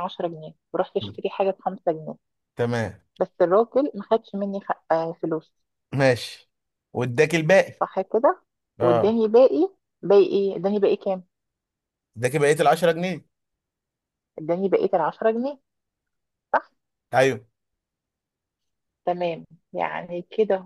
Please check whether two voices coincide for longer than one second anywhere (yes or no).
no